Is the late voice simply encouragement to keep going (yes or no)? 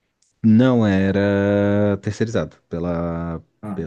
yes